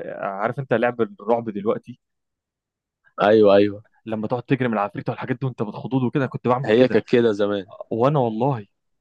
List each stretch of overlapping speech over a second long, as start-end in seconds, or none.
none